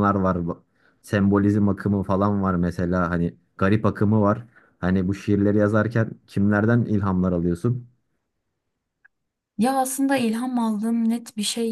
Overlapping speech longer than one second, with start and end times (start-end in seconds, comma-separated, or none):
none